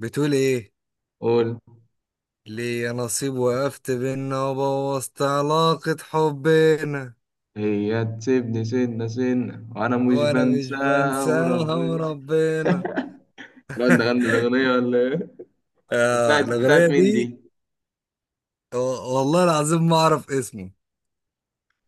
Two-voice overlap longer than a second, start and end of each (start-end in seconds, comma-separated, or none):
10.1-12.0, 16.1-17.3